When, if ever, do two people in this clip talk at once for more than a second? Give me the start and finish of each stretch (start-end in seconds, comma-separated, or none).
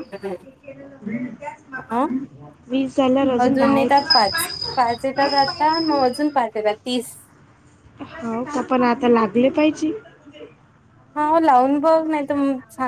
none